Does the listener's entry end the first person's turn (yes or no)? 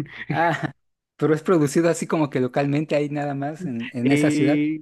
yes